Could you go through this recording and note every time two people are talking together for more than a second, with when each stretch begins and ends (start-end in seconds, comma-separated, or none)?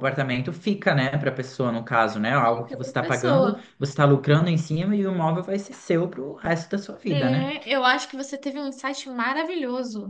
2.4-3.7